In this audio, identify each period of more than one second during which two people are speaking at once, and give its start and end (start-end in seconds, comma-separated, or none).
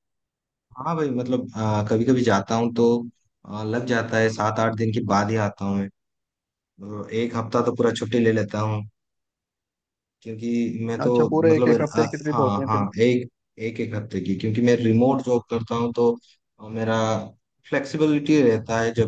11.0-12.8